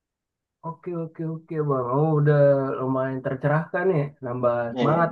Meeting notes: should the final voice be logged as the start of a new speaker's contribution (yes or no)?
no